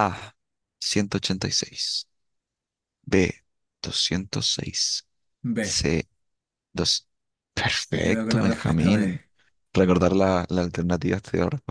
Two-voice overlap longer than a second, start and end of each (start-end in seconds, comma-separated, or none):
7.9-9.2